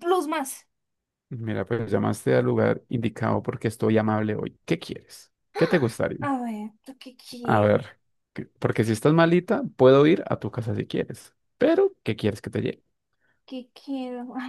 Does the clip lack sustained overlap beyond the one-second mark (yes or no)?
yes